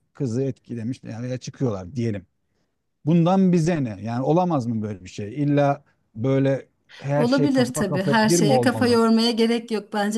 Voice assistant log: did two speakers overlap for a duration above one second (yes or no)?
yes